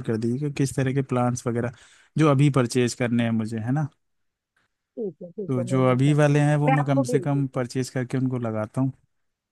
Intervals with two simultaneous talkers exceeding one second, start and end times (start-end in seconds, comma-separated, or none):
5.5-7.6